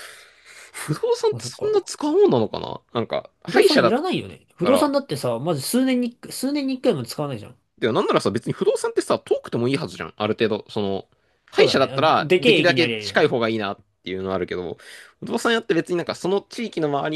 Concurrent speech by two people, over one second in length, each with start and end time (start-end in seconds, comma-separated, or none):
11.6-13.3